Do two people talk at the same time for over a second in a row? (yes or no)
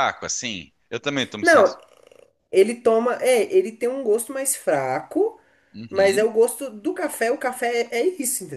no